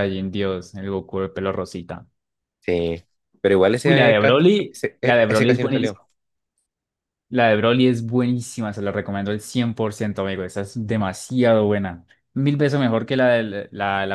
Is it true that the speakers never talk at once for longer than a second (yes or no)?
no